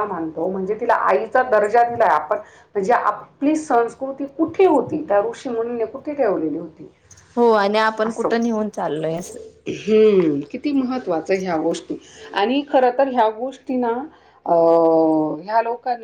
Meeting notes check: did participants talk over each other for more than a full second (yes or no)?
no